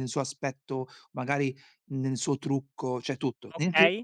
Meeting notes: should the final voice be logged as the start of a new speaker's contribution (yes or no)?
yes